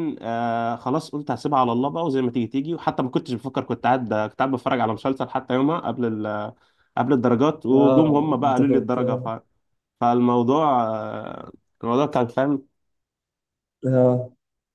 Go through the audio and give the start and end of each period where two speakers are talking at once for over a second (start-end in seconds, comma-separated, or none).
7.7-9.0